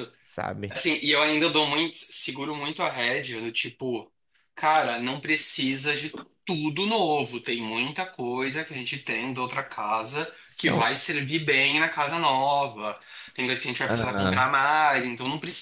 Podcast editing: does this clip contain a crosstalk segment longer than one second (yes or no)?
no